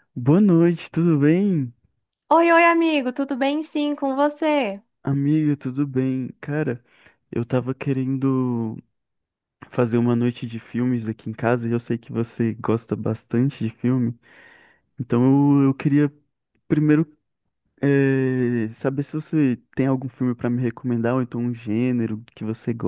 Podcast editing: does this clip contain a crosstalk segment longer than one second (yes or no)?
no